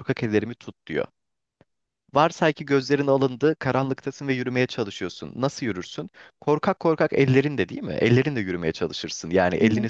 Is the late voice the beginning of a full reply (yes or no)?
no